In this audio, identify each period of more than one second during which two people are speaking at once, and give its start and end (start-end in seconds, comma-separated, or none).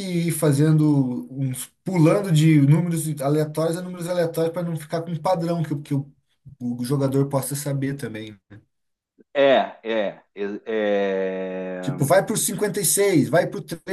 none